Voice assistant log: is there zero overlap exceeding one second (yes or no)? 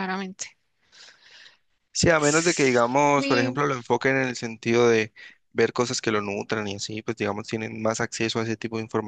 no